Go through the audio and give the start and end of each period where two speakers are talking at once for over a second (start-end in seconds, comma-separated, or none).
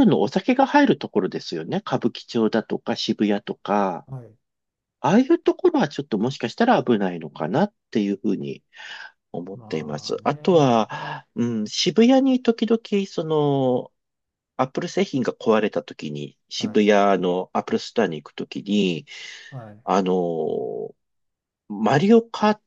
9.5-10.9